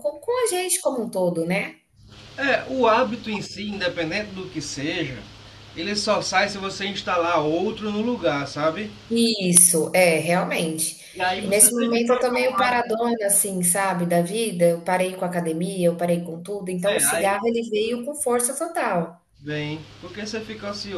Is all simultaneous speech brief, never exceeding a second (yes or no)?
no